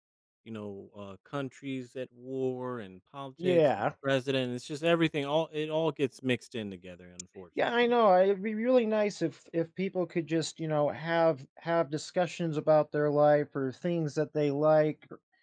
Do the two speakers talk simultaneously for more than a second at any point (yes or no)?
no